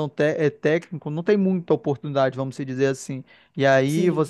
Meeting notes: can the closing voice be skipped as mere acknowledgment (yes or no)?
yes